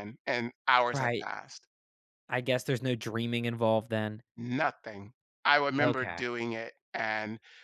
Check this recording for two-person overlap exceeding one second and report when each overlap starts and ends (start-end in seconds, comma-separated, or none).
none